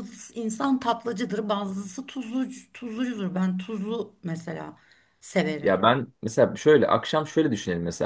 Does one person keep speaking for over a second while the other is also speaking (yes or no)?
no